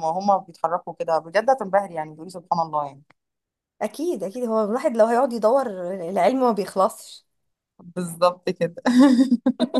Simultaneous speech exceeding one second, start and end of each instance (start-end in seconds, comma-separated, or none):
none